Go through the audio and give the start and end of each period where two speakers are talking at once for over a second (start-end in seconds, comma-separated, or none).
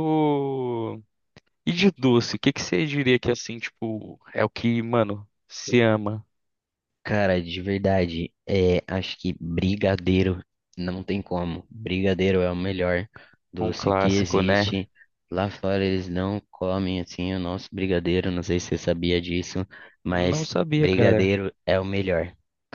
13.6-14.8, 20.1-21.4